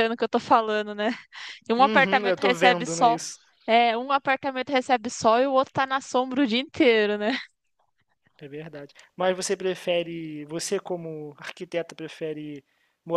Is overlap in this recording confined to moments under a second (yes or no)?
no